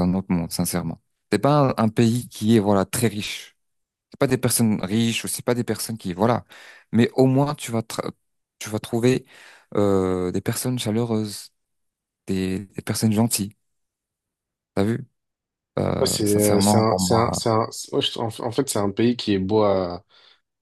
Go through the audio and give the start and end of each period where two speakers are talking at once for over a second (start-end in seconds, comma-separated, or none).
16.0-17.4